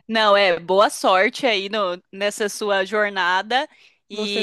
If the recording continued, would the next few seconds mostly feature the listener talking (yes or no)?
no